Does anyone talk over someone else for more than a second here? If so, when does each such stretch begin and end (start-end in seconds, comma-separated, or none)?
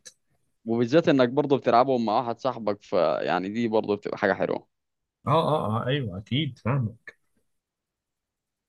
none